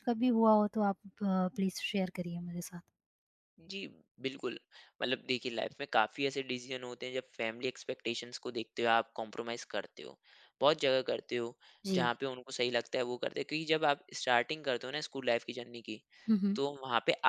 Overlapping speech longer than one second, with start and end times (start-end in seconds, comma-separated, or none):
none